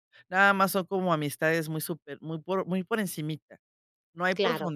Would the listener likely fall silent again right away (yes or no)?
yes